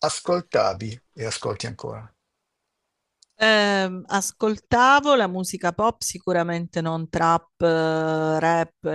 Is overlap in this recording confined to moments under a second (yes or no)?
yes